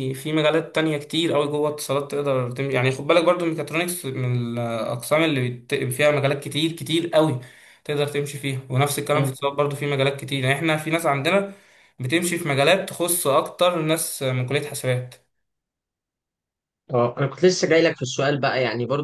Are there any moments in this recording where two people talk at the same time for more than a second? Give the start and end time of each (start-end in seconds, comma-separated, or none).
none